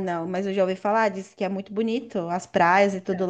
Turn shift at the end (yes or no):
no